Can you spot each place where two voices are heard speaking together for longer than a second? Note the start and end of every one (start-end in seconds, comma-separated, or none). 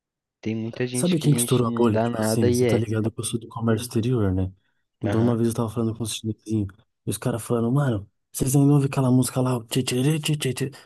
0.9-2.9